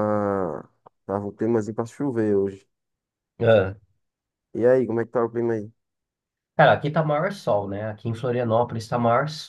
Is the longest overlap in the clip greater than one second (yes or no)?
no